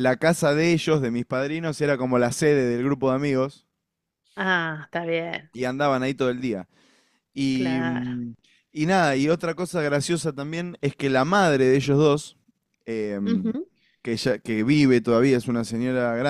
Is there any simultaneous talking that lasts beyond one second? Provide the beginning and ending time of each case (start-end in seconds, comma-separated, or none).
none